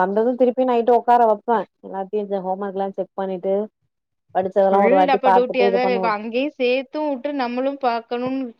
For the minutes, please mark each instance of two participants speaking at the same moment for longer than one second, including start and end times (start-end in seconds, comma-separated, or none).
none